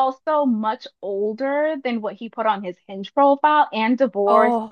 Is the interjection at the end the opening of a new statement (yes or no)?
no